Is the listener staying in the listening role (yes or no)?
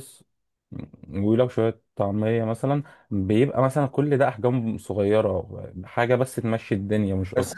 no